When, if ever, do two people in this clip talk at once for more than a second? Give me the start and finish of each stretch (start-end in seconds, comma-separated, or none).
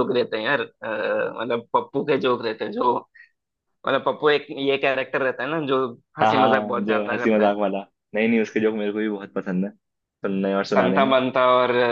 6.2-7.5